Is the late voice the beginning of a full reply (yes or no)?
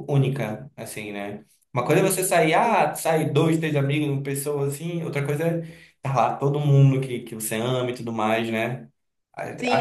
yes